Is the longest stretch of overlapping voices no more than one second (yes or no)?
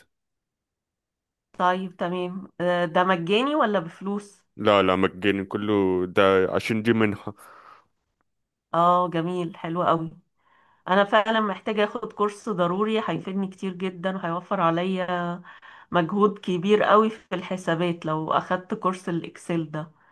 yes